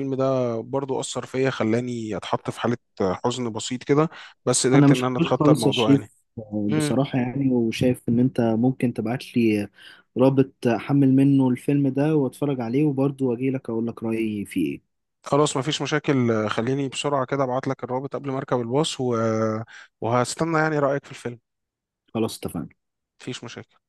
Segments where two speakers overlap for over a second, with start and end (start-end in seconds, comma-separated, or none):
4.8-6.1